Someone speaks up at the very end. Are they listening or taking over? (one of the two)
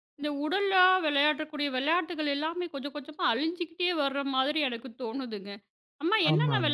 listening